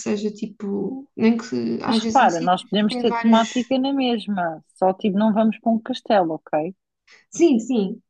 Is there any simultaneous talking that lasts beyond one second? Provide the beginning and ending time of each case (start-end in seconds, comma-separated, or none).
1.9-3.5